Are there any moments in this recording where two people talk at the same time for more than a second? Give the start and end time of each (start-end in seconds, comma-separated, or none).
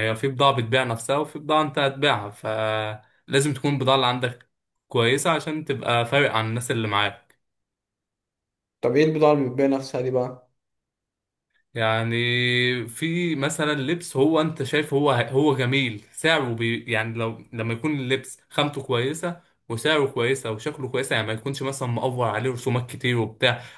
none